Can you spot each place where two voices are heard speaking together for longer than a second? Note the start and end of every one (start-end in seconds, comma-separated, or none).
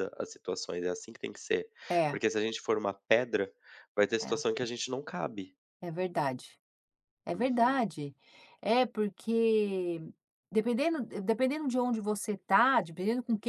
none